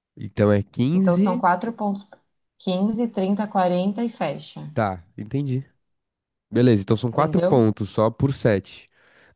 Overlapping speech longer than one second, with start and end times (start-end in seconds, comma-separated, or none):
none